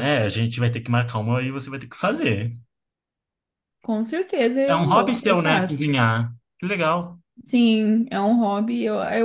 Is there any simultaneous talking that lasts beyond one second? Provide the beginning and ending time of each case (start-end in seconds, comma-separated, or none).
4.7-5.9